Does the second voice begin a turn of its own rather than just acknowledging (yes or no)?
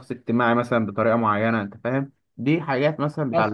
no